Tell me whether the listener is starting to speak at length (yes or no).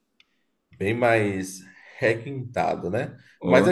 no